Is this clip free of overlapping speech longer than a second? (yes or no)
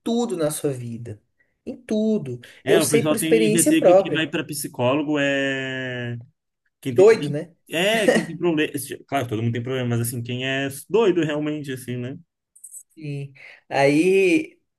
no